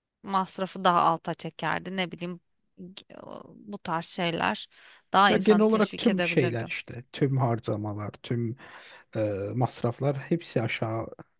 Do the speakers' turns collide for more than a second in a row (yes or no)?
yes